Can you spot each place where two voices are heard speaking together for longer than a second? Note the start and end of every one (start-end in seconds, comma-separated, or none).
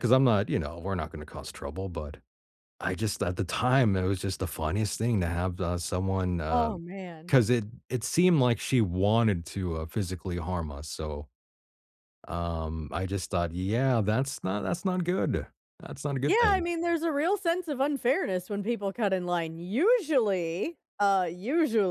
none